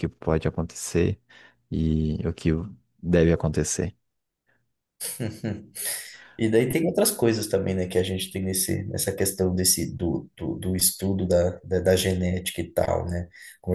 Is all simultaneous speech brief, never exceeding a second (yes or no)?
yes